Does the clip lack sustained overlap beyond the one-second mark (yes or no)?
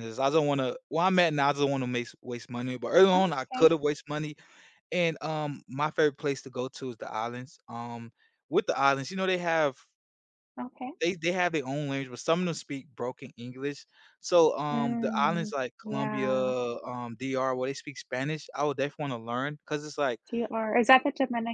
no